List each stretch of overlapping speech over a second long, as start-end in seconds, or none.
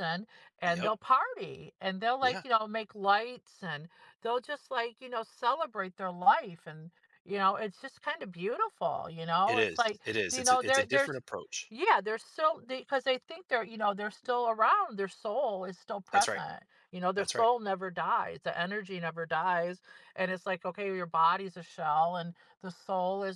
9.5-11.2